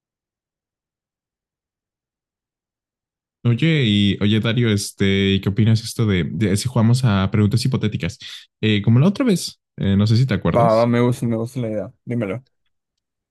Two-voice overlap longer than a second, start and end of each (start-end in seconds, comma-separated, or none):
none